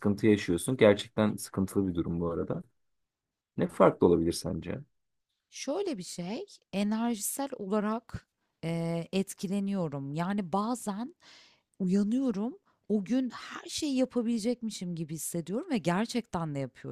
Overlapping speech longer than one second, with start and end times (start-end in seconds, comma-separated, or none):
none